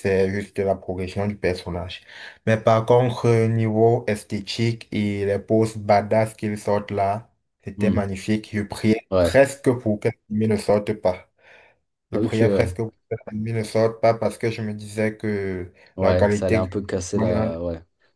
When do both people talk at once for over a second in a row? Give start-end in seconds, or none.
16.0-17.5